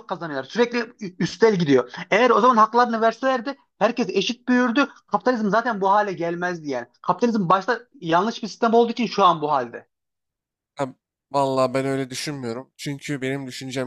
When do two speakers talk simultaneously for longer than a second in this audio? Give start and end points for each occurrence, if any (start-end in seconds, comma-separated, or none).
none